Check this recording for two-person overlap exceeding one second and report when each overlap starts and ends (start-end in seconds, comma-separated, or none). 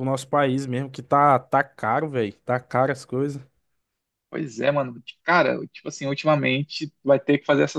none